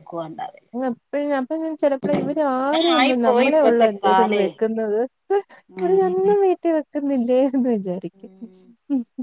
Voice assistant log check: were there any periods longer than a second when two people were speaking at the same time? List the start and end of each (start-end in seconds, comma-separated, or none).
2.6-4.4